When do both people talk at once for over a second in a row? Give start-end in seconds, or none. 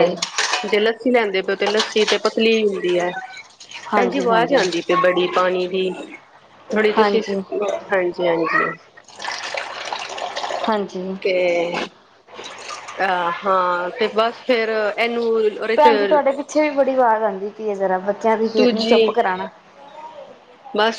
none